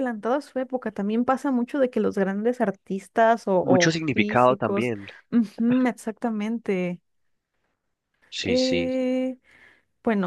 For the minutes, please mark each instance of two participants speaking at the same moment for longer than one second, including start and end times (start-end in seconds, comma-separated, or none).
3.6-4.9